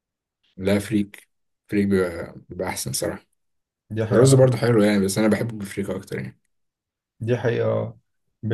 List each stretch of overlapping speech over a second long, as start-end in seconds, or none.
none